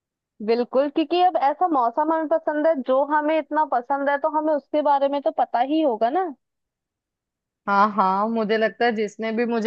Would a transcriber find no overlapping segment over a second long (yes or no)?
yes